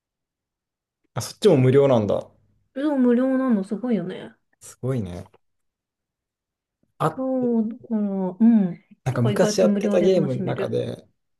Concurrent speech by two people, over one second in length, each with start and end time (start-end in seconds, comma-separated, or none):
9.0-10.8